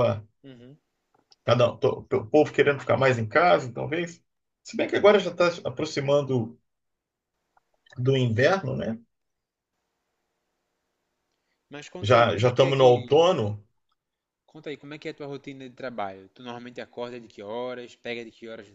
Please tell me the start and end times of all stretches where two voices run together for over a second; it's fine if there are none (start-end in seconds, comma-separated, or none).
12.0-13.3